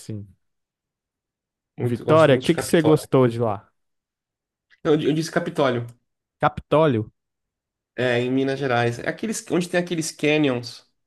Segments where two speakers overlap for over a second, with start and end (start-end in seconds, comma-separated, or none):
1.8-3.1